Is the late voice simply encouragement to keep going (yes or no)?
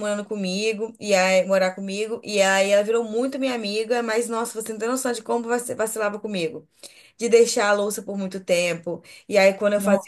yes